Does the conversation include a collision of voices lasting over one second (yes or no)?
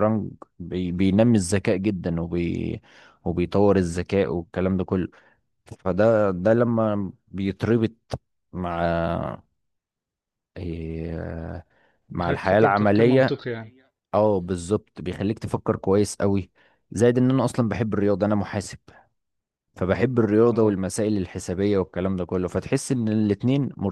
yes